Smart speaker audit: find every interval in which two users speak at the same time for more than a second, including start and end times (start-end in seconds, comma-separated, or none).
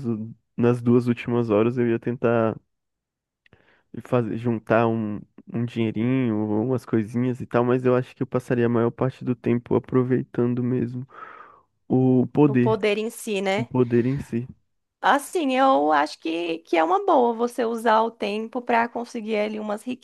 none